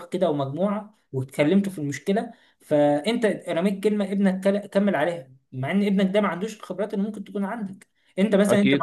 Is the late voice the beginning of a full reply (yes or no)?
no